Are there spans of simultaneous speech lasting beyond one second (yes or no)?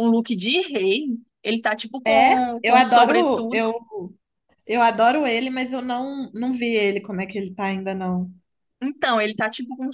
yes